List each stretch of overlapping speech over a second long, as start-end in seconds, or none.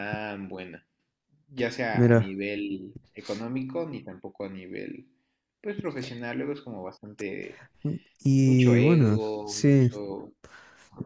8.4-9.9